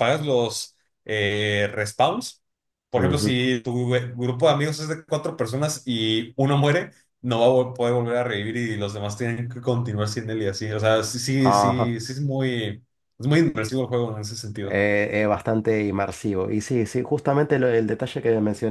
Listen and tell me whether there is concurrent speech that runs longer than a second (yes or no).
no